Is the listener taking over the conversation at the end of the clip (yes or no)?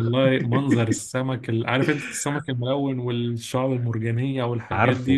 yes